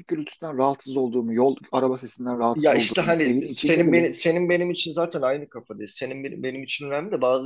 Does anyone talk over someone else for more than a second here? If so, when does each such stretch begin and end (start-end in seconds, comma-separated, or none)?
2.5-4.1